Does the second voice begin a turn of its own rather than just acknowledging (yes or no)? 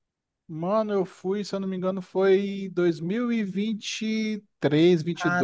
yes